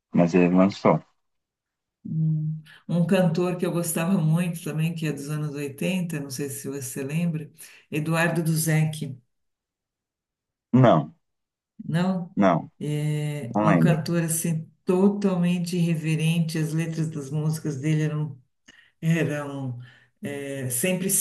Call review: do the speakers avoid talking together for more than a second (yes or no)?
yes